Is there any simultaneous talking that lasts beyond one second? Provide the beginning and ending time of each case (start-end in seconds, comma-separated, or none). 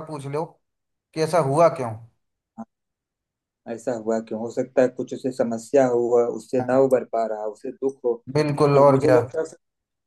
none